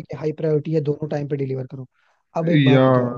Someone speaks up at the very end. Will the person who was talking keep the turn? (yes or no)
yes